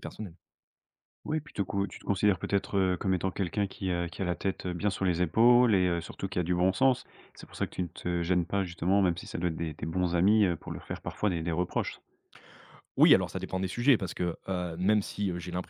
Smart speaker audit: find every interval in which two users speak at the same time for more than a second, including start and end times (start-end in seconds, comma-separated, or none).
none